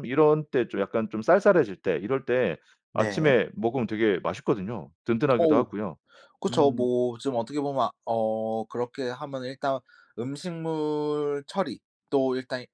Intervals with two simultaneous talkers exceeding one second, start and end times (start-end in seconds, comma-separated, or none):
none